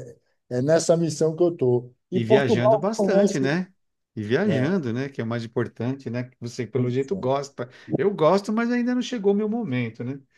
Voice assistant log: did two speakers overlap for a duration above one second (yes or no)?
yes